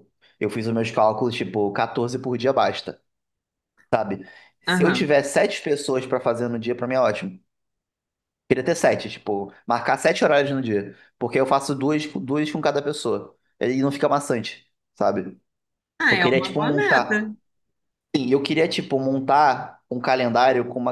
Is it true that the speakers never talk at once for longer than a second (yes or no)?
no